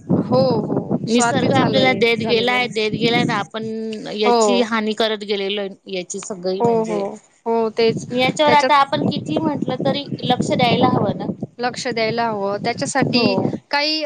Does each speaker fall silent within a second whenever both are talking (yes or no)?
no